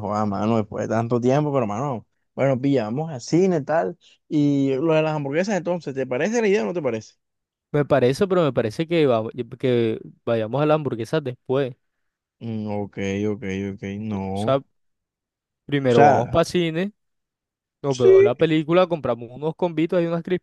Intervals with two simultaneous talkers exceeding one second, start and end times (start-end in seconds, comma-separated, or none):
none